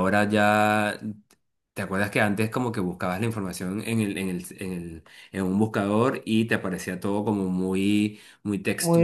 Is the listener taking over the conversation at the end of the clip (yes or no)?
yes